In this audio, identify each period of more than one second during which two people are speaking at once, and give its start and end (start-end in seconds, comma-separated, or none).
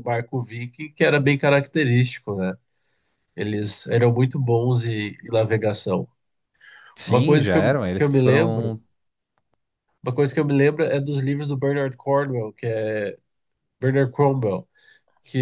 7.1-8.7